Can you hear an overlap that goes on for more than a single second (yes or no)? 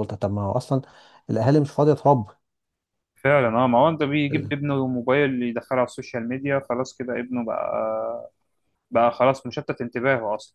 no